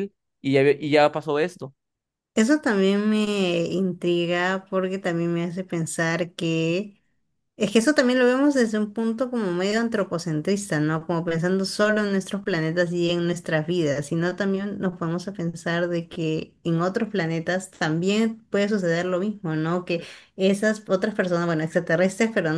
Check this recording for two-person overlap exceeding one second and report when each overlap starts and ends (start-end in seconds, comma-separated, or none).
none